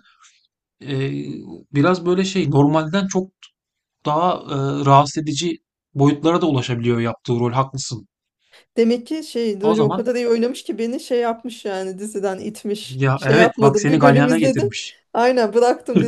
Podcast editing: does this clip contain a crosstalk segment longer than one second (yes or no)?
yes